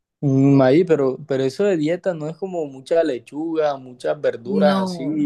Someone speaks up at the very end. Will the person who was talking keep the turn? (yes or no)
yes